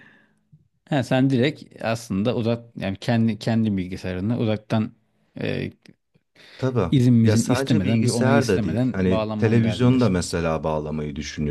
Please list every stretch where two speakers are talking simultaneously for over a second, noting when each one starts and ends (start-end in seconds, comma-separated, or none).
6.9-10.1